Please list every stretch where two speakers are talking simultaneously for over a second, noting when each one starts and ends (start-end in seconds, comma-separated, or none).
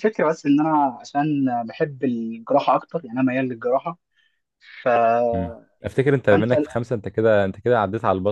none